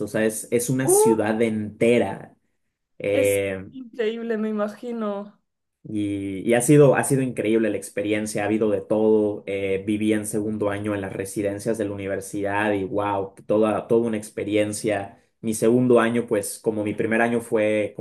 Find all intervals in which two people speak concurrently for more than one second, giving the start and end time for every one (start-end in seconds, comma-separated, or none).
none